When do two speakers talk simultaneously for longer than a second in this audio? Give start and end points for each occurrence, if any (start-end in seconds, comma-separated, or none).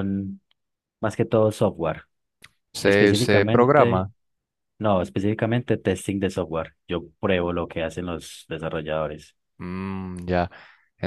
2.8-4.0